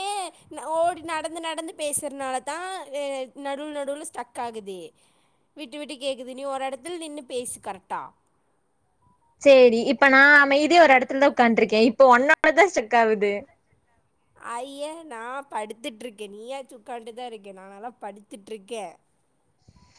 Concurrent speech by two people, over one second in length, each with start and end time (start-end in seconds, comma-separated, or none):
none